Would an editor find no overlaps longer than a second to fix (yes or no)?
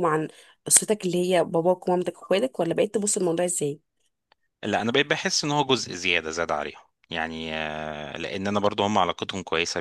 yes